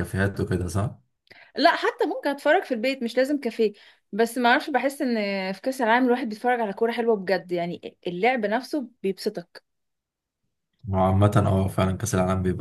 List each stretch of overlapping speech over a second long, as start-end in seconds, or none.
none